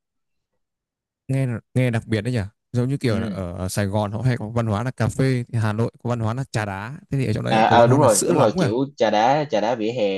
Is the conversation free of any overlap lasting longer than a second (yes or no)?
no